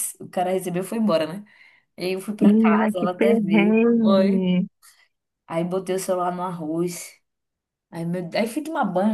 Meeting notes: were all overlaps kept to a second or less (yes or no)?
no